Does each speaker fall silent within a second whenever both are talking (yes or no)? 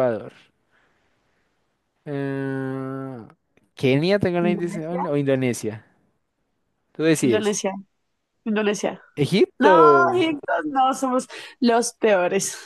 yes